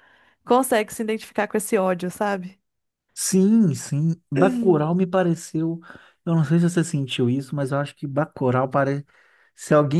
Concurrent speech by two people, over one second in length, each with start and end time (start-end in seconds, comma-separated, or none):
none